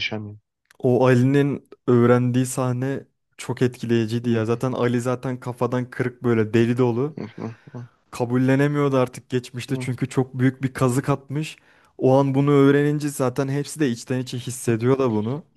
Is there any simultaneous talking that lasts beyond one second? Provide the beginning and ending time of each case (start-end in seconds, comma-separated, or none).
none